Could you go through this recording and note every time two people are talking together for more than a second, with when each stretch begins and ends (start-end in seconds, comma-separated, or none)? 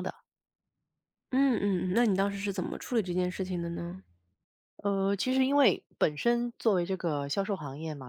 none